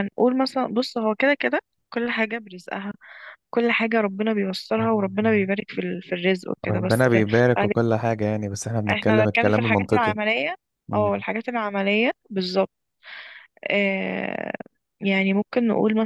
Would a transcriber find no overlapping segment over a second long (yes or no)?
no